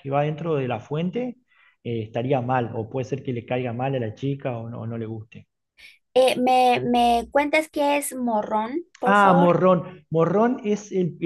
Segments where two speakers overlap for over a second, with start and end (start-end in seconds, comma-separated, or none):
none